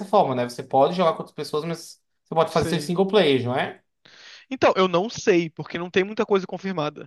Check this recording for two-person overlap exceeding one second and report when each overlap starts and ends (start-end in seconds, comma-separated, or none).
none